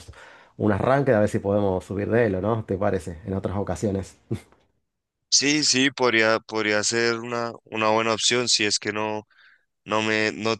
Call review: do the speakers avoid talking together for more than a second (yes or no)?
yes